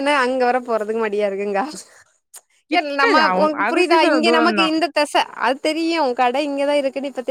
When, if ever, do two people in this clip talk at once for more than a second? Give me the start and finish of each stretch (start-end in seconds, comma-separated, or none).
2.8-4.7